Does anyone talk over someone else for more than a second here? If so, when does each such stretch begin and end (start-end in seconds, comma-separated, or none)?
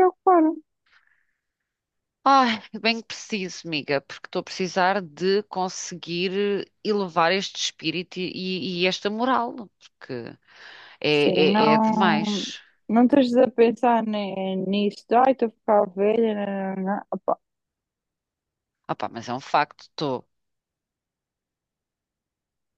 11.1-12.4